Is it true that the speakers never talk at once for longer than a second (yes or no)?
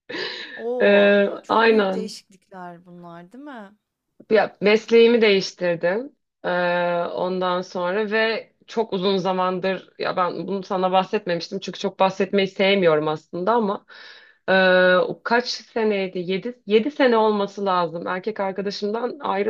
no